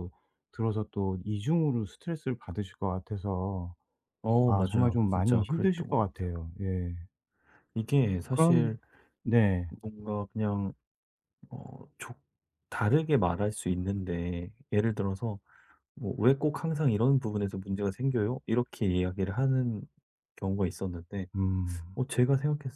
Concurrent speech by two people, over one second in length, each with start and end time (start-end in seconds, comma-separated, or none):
4.5-6.3